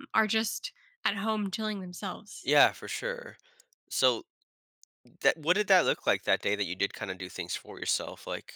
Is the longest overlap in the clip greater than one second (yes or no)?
no